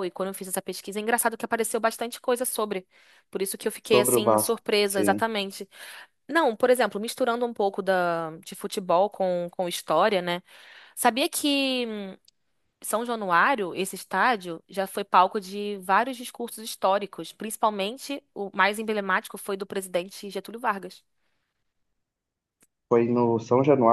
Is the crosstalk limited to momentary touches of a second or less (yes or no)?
no